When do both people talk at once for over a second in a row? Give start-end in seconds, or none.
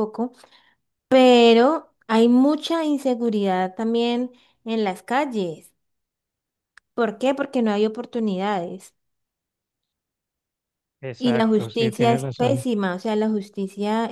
11.2-12.6